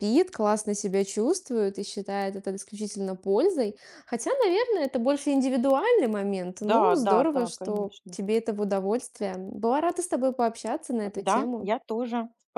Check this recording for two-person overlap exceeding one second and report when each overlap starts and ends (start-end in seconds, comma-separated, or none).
6.6-8.2